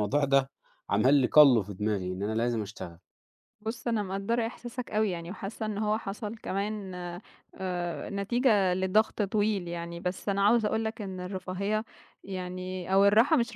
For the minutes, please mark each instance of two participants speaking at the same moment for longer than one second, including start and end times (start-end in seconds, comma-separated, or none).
none